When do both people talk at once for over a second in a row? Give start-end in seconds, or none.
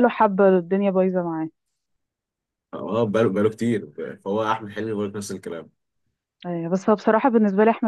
none